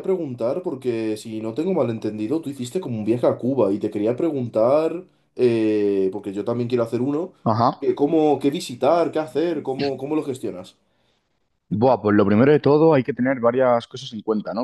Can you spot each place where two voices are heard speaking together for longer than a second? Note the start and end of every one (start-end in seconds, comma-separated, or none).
none